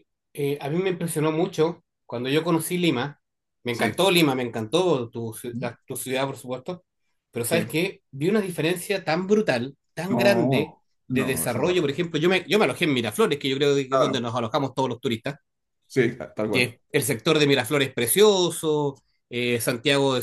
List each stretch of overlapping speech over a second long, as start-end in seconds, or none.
10.1-11.7